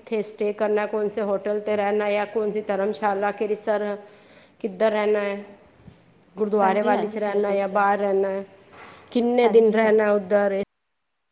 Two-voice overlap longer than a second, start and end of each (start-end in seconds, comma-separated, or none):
6.6-8.1